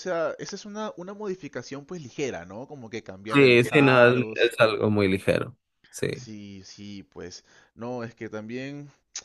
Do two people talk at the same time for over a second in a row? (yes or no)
yes